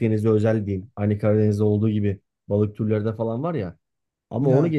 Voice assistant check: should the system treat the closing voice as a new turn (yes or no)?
no